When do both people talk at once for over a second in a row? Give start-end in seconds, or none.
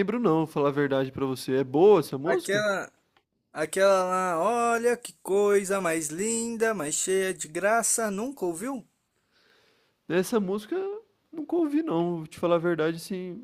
none